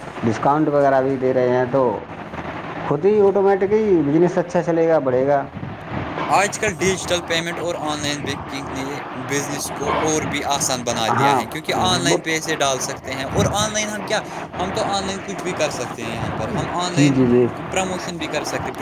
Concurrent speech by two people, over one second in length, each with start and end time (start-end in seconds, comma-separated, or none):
11.1-12.5